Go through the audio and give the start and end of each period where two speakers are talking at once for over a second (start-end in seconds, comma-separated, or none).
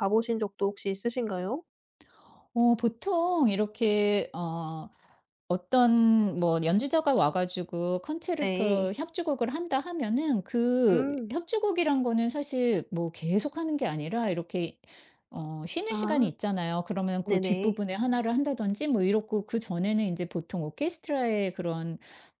none